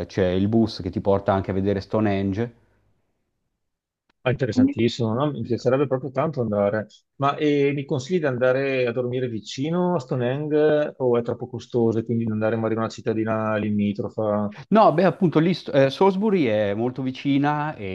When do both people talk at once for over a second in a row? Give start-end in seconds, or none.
none